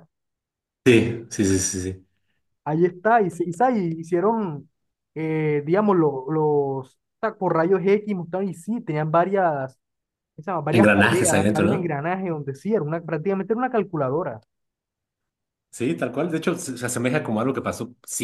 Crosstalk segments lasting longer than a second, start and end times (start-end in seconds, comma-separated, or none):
10.7-11.9